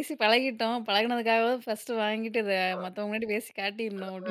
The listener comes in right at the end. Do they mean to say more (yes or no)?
yes